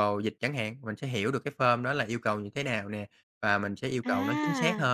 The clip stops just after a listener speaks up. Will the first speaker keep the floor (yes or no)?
yes